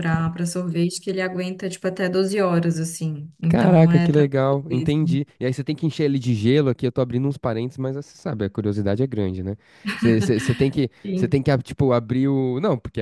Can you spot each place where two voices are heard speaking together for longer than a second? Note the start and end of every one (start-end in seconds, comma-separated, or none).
3.5-5.0